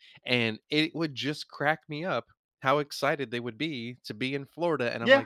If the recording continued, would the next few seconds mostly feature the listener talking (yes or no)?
no